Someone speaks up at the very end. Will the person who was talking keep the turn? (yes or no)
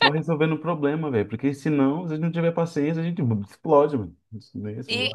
no